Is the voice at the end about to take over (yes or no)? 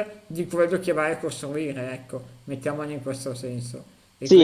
yes